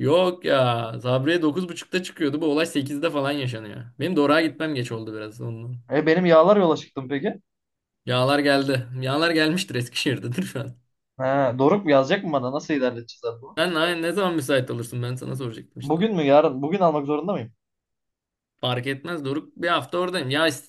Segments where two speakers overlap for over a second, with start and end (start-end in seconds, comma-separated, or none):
none